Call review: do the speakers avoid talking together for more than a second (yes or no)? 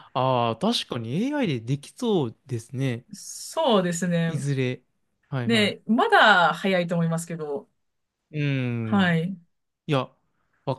yes